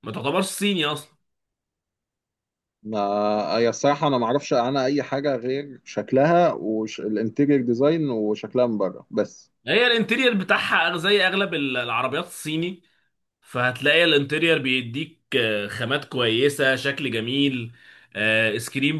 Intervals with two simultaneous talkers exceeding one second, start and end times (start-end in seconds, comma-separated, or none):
none